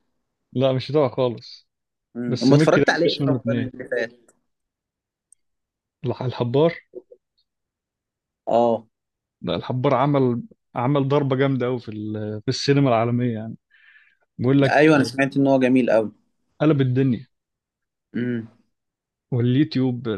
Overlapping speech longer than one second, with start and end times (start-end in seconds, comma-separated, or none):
2.3-3.7